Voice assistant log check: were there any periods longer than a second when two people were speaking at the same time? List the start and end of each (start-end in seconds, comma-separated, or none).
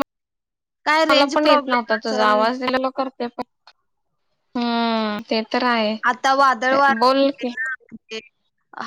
1.1-2.4